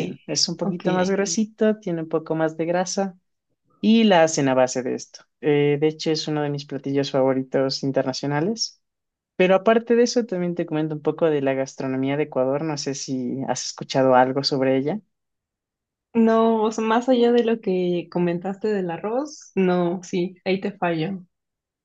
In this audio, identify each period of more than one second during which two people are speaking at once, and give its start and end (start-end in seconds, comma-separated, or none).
none